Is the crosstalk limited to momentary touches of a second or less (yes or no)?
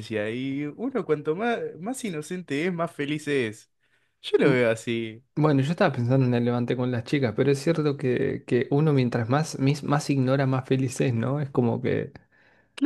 yes